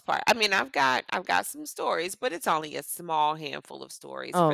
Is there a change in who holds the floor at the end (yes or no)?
no